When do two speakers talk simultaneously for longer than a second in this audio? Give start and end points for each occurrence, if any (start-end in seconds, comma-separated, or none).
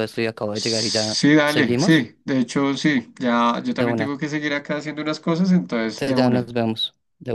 0.5-2.1